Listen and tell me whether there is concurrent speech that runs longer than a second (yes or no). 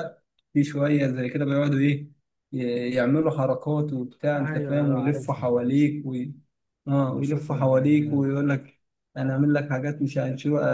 yes